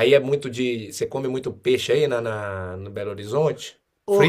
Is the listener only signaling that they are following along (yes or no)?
no